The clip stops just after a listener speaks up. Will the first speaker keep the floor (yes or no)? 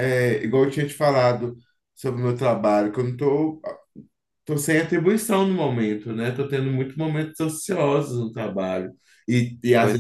yes